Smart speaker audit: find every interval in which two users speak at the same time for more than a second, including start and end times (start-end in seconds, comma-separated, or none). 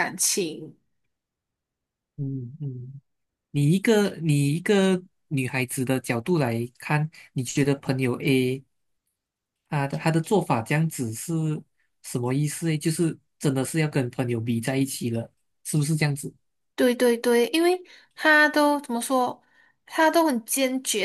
none